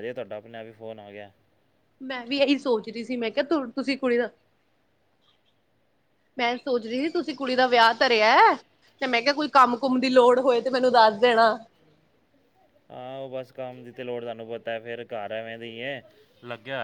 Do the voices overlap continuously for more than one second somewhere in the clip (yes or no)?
no